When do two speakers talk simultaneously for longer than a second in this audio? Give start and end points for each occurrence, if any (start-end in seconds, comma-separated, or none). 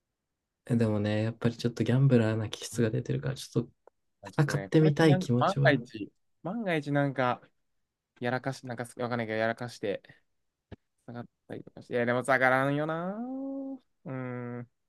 4.4-5.8